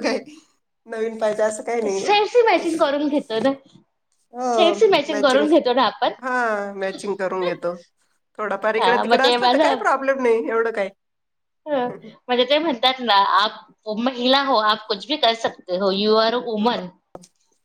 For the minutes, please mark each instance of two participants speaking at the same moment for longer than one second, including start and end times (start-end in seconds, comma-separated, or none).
none